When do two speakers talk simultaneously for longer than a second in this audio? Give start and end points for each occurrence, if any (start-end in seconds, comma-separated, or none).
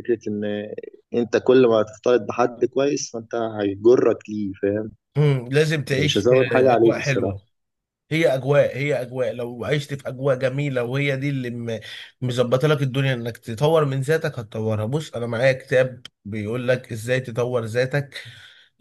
5.9-7.4